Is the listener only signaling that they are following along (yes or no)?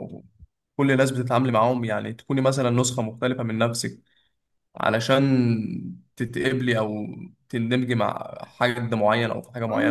no